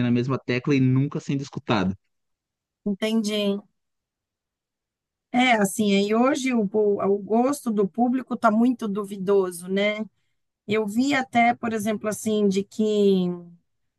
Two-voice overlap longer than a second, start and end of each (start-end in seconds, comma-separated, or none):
none